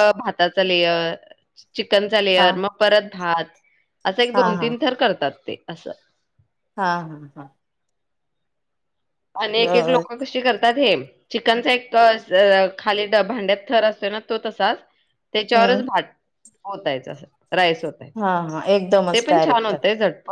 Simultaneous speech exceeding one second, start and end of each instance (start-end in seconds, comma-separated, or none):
none